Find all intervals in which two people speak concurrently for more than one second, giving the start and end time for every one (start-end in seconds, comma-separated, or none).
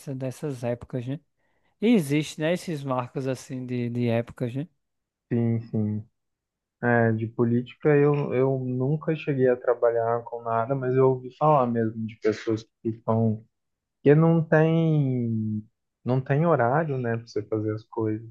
none